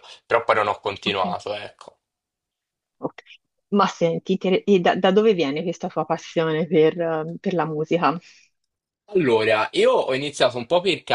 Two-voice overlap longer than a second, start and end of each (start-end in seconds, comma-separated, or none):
none